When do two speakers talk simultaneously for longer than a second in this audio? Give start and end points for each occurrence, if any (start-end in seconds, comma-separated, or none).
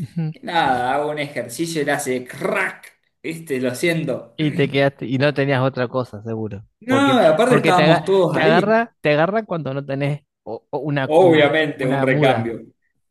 6.8-8.8, 11.1-12.5